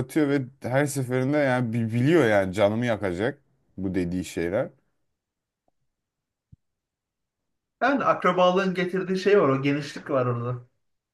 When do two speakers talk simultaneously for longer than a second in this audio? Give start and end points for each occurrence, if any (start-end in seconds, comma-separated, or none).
none